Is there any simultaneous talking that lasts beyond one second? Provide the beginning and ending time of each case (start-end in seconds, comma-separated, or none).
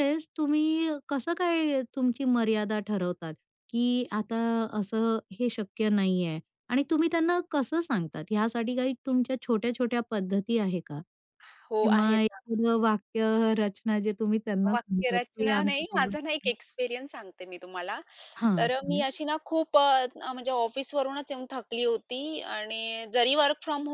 14.7-16.1